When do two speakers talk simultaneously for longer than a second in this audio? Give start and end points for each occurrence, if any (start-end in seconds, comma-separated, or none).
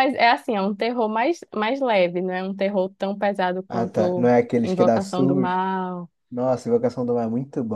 3.7-5.6